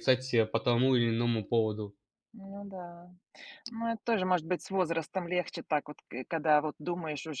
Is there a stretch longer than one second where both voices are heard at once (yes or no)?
no